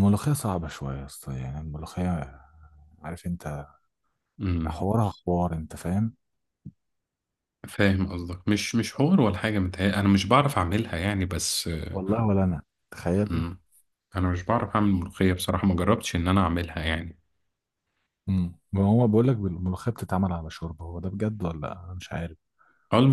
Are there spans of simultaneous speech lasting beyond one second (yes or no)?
no